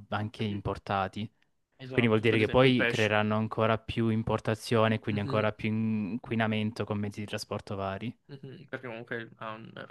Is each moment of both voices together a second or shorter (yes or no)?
no